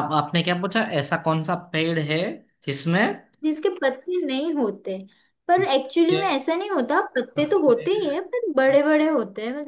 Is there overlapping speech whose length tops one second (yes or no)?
no